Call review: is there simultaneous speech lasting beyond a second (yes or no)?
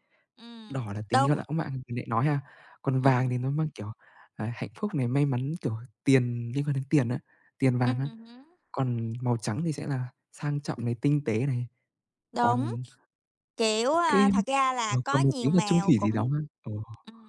yes